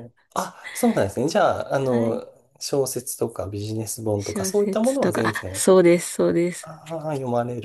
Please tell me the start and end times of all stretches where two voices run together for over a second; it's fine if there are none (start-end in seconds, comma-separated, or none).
4.2-5.7